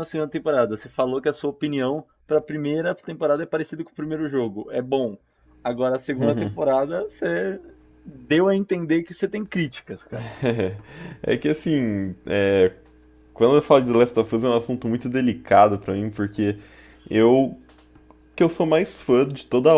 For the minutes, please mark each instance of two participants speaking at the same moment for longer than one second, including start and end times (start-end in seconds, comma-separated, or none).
none